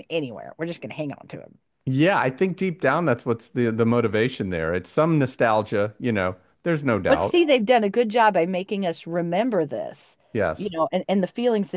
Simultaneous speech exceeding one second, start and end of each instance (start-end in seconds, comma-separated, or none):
none